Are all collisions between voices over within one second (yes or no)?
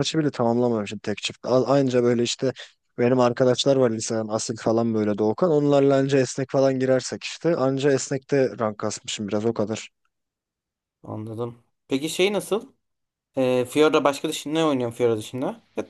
yes